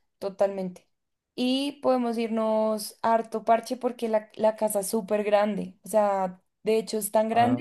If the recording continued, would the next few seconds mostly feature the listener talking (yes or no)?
no